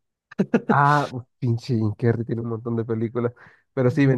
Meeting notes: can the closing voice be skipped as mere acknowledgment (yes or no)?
yes